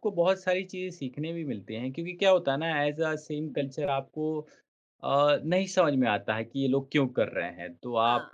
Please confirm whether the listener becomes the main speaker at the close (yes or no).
no